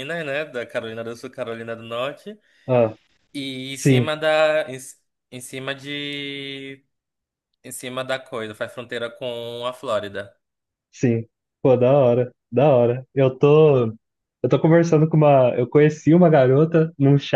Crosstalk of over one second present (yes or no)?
no